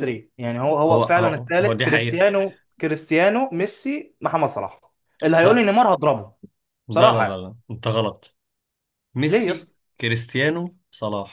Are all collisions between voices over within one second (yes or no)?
no